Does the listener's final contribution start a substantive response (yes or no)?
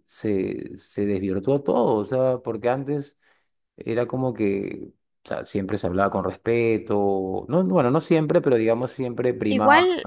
yes